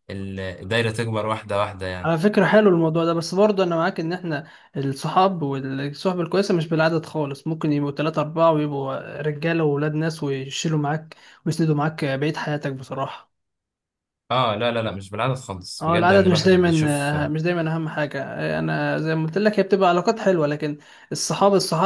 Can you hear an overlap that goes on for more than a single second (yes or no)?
yes